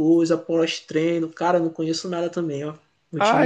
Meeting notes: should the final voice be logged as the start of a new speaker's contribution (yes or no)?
yes